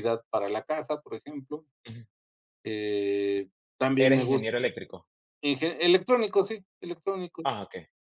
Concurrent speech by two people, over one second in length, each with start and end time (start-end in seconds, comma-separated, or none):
none